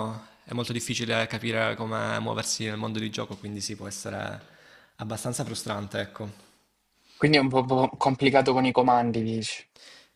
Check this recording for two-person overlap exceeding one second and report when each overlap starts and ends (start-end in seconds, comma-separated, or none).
none